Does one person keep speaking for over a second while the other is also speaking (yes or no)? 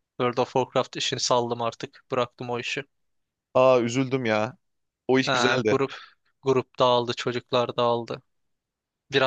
no